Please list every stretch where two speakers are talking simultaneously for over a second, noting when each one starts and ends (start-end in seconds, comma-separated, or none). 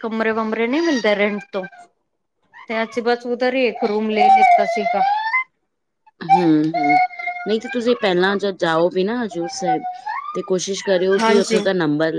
none